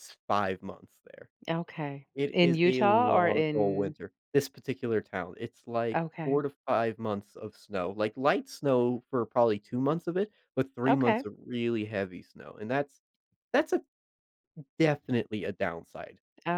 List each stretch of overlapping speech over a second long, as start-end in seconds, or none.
2.1-3.9